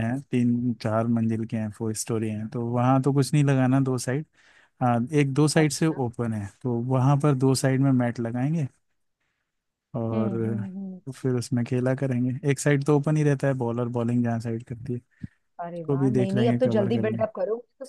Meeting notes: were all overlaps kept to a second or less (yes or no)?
no